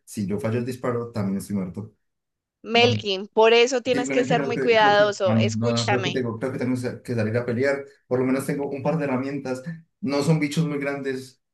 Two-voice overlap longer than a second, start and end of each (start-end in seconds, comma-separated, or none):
3.9-6.2